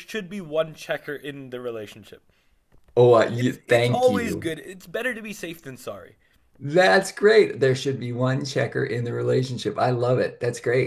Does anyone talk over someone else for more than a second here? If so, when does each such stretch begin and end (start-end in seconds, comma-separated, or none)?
3.3-4.5